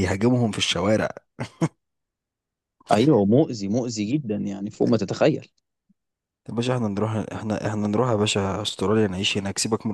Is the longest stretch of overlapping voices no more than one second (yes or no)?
yes